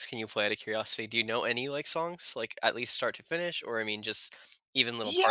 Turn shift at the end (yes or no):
yes